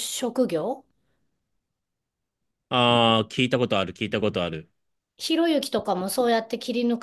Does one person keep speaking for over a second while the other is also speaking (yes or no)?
no